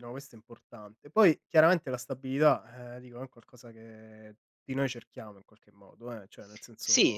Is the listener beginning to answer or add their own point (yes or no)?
yes